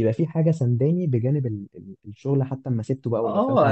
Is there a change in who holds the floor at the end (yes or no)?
yes